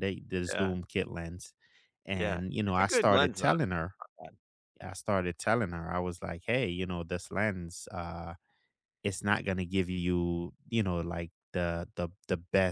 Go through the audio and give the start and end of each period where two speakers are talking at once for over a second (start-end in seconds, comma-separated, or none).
2.2-3.5